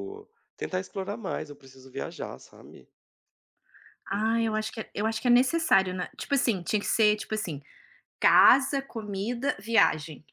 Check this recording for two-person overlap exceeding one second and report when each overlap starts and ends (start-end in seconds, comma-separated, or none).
none